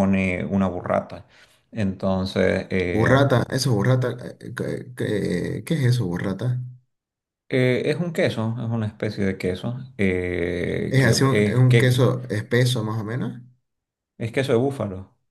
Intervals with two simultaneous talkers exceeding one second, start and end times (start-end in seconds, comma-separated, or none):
10.9-12.1